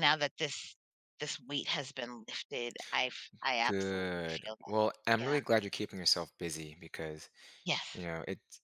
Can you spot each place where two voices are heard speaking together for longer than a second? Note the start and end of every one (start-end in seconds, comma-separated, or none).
3.6-5.4